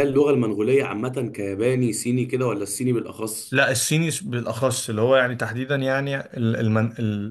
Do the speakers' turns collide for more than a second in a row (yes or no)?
no